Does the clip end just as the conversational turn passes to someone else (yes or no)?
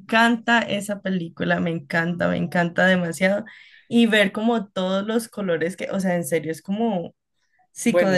yes